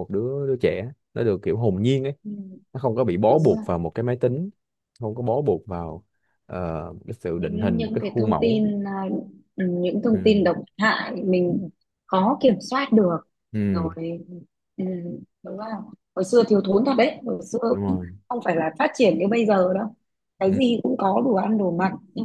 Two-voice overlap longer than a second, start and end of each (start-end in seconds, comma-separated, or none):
7.3-8.6